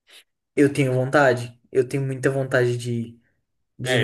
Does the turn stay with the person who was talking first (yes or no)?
no